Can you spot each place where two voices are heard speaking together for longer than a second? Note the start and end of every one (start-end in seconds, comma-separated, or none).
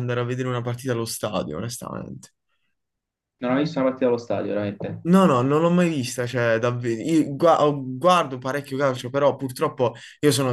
none